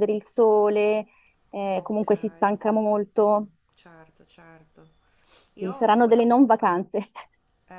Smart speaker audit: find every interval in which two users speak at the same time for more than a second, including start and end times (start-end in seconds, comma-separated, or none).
none